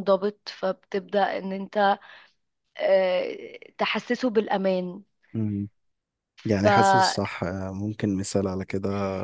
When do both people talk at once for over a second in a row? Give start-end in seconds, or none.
none